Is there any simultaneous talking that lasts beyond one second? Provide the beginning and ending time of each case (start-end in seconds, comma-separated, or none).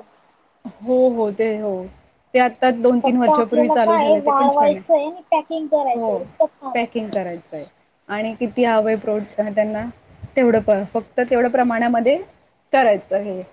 3.0-4.8